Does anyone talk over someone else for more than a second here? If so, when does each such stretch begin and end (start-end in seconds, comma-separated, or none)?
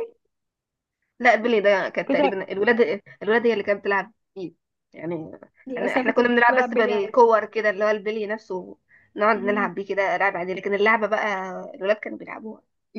5.8-7.2